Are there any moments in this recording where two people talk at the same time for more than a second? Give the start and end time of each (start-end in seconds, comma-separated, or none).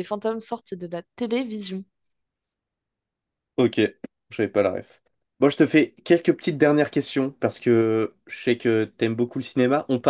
none